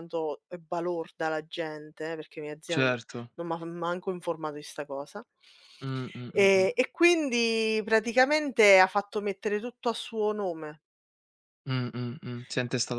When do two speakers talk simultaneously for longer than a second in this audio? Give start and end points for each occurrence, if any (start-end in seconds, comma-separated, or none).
none